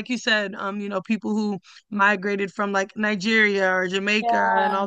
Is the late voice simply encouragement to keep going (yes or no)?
yes